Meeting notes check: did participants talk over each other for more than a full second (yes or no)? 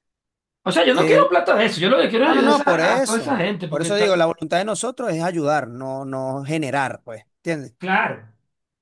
yes